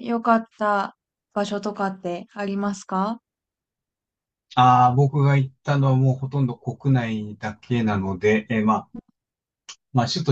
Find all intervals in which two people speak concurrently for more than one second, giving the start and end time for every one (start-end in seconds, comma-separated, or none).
none